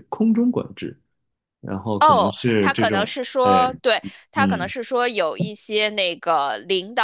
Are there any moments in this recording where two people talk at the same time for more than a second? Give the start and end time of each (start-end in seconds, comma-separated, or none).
2.0-3.6